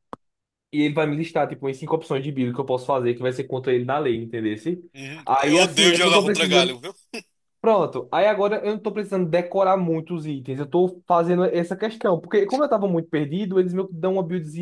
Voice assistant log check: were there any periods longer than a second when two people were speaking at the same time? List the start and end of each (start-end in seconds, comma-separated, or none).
5.3-6.8